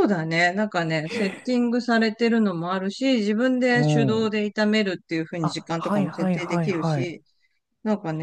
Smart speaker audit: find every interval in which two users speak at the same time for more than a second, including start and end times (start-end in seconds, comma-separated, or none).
5.4-7.1